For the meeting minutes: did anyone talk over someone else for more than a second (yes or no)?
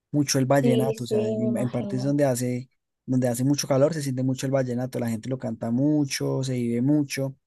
yes